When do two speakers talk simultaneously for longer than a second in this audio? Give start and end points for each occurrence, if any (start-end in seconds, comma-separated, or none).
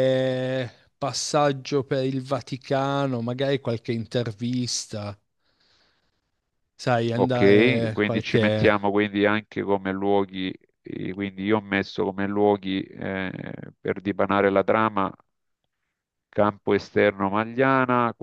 7.1-8.7